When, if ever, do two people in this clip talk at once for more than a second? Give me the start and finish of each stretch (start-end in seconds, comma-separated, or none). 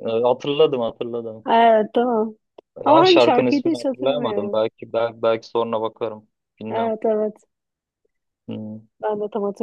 2.9-4.6